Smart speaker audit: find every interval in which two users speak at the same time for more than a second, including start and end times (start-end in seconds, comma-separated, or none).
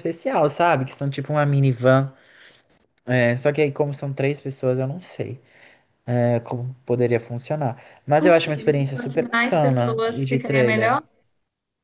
8.2-11.0